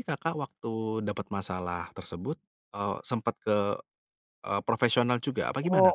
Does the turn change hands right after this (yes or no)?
yes